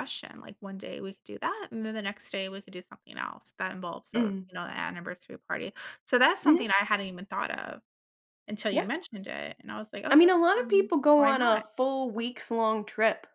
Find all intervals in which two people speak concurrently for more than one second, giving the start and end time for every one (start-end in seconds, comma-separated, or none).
10.1-11.6